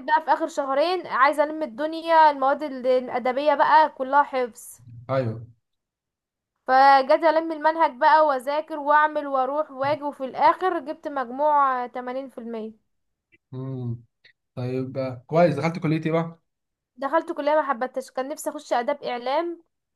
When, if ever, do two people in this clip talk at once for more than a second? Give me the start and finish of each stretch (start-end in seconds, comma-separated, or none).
none